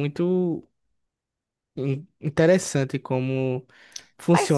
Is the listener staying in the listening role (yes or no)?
no